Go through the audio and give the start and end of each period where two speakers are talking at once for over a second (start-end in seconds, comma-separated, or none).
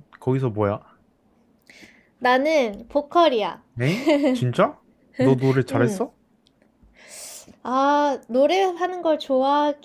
none